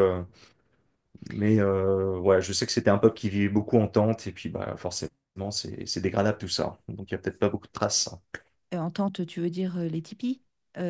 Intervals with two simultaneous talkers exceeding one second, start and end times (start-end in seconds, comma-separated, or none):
none